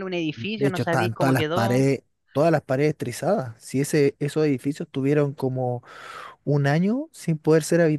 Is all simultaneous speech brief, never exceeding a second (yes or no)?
no